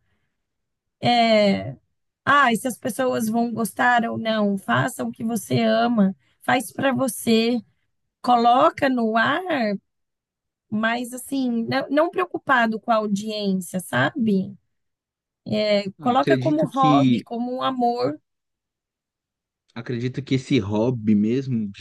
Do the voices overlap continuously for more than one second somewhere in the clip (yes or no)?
yes